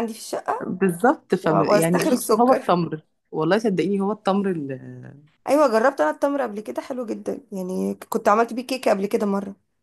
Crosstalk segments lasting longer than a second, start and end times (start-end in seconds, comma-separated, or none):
1.4-2.7